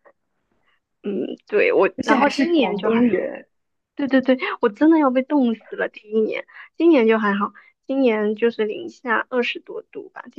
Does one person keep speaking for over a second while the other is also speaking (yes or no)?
yes